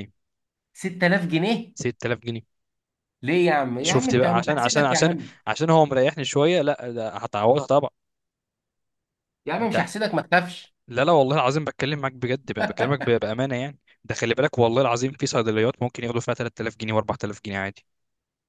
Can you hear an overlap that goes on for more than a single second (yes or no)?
yes